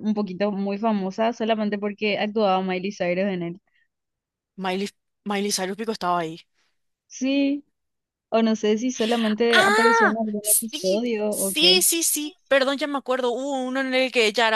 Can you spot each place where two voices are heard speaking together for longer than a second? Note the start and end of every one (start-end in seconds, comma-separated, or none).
9.5-11.8